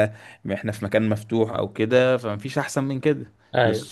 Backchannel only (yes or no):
yes